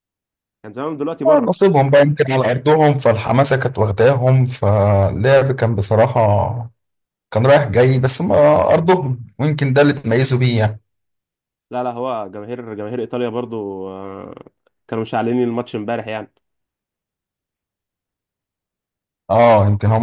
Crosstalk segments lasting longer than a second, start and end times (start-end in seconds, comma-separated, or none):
none